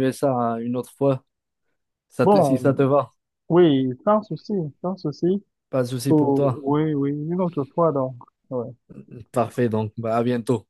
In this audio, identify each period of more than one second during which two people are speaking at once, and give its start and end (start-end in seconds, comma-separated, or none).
none